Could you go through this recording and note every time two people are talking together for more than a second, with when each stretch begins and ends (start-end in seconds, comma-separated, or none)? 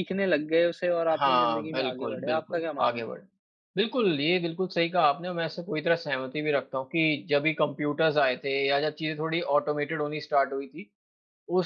1.1-3.1